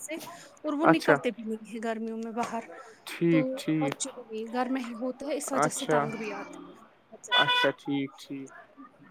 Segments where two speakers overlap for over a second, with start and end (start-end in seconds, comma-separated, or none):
none